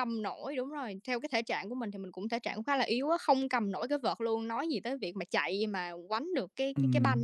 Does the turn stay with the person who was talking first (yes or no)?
no